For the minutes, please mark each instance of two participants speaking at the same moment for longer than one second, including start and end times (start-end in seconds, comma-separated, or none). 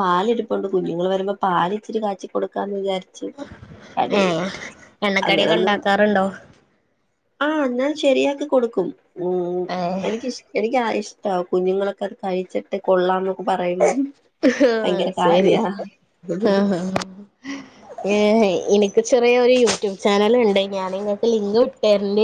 none